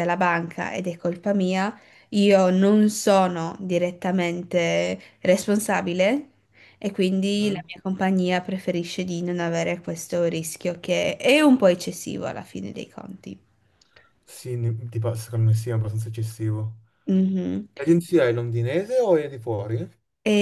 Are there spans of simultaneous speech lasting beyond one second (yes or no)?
no